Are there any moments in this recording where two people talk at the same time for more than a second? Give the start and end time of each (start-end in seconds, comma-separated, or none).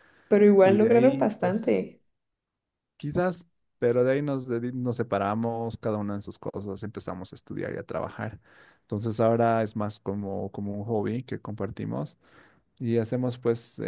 0.6-1.8